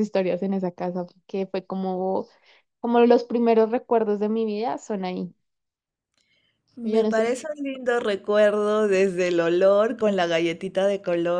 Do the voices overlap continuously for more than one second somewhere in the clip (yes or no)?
no